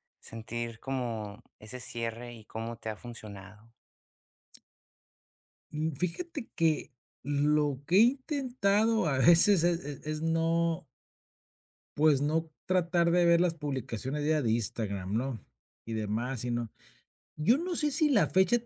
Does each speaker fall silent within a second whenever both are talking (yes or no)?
yes